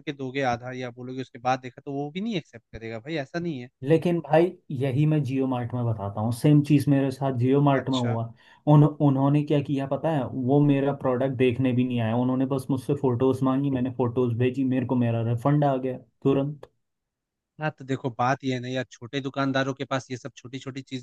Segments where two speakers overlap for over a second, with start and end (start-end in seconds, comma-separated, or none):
none